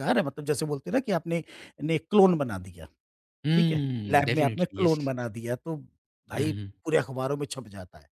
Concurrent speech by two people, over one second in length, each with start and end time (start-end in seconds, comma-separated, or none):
3.5-5.0